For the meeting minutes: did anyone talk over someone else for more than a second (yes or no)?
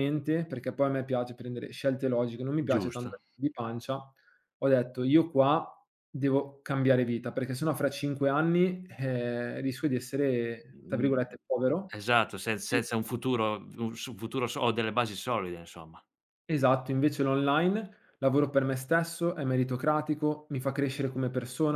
no